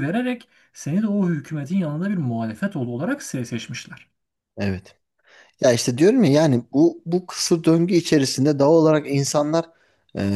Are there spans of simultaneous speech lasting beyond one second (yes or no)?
no